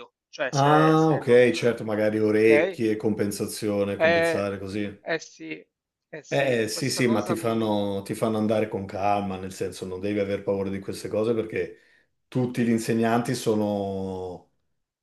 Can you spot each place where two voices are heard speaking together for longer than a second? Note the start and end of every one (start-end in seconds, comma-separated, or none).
0.5-1.8, 6.3-7.7